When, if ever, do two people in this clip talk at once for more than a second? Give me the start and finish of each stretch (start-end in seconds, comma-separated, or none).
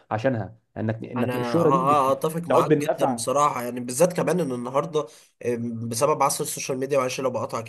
1.2-3.3